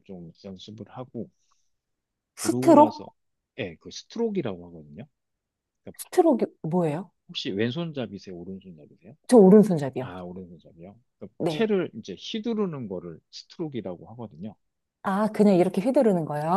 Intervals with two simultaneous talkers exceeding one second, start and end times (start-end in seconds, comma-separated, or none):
none